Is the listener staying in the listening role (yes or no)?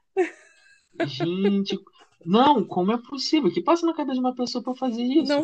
no